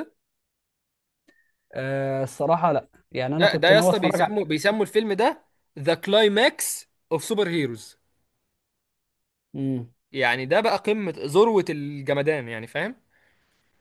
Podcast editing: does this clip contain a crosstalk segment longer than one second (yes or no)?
yes